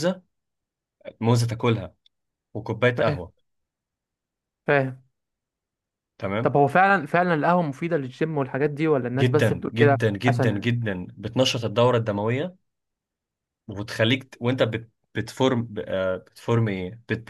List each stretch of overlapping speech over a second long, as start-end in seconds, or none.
9.2-10.7